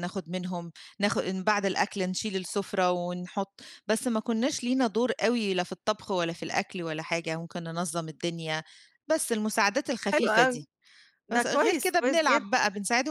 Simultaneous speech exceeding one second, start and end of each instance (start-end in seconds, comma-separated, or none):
11.3-12.6